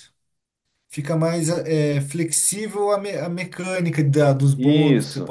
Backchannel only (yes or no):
no